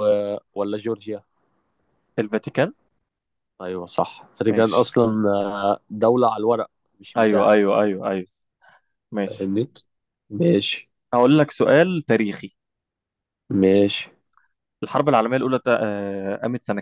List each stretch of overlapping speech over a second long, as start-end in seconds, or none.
none